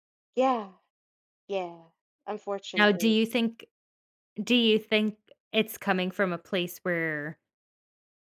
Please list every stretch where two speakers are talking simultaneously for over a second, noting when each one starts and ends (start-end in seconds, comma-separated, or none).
none